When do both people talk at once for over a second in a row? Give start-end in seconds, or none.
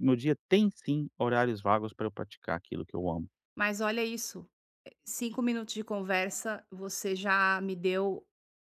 none